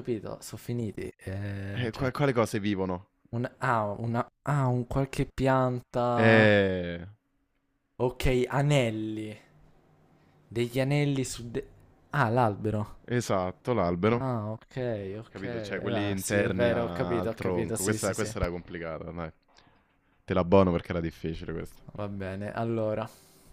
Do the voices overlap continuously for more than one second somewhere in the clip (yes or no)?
yes